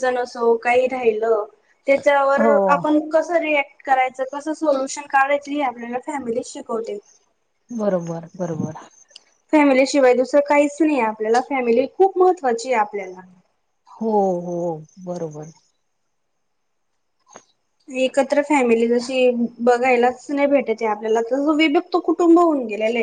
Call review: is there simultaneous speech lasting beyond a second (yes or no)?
no